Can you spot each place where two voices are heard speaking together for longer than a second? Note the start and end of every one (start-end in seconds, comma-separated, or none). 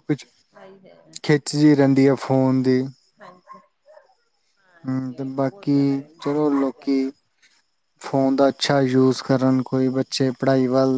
4.9-7.1